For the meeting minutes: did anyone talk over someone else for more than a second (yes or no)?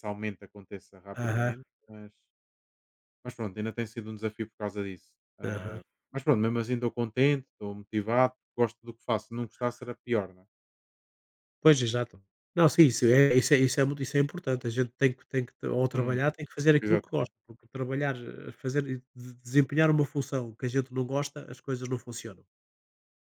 no